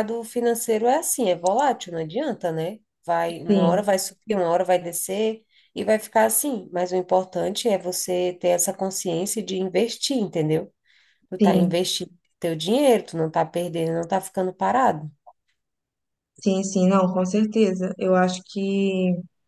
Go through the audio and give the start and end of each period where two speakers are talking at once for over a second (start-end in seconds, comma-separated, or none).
none